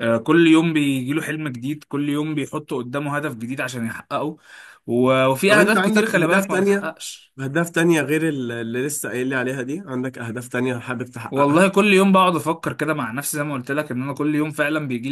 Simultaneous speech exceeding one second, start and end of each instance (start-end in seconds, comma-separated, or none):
5.5-6.9